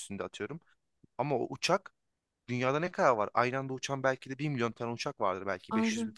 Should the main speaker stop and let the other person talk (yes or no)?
no